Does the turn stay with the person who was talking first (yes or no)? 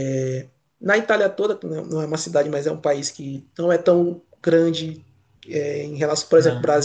yes